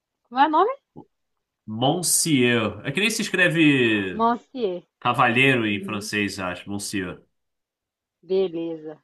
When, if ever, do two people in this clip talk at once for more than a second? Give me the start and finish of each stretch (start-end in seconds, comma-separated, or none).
none